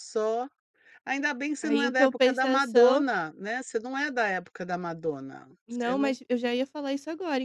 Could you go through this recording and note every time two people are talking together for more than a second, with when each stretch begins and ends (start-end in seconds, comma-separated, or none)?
1.6-3.0